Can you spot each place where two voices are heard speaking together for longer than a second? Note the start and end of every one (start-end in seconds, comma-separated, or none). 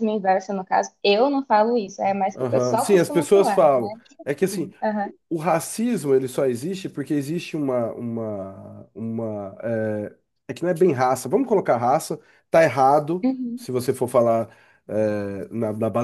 2.3-3.6